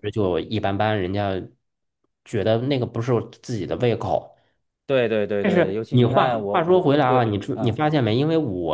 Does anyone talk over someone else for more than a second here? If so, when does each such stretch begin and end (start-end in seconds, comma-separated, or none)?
5.4-7.8